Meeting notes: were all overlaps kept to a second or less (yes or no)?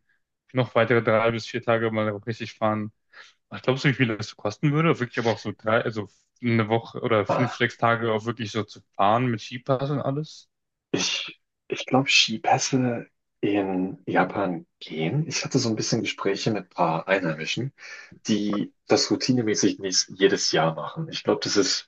yes